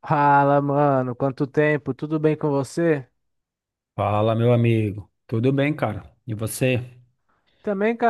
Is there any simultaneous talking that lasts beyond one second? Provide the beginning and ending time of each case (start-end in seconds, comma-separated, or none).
none